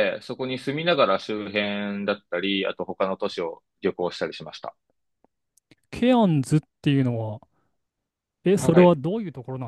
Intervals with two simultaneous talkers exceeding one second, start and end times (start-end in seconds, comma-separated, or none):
none